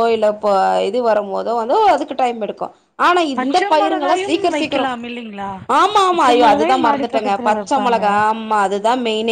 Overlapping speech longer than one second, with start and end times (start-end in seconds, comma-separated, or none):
3.4-4.9, 6.1-8.0